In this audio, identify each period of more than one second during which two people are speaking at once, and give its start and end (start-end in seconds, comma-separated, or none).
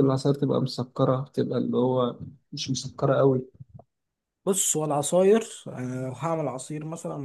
none